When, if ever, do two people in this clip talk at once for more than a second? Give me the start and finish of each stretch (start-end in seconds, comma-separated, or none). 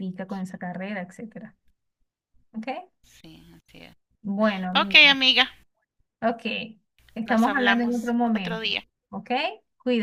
7.2-8.6